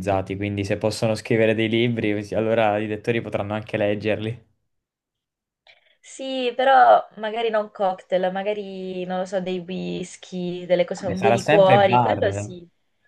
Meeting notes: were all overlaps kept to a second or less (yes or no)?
no